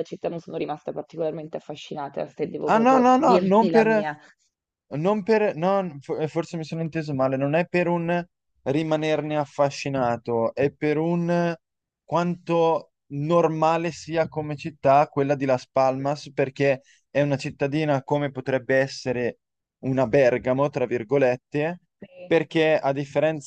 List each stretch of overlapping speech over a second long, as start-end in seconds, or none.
2.7-4.0